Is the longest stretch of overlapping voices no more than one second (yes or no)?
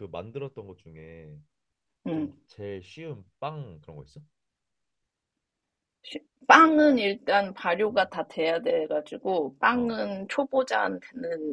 yes